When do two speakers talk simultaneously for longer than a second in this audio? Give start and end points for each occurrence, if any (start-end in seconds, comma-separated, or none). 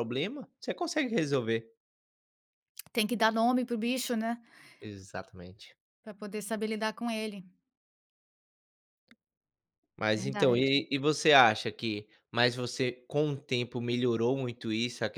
none